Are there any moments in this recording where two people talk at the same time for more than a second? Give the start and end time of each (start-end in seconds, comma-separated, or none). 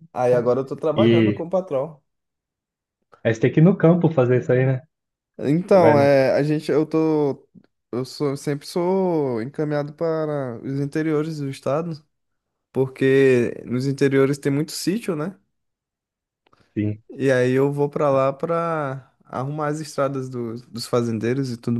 none